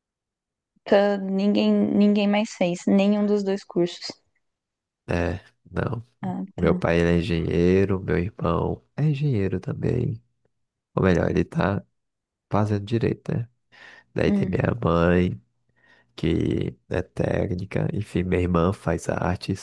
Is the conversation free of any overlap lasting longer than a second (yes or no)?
yes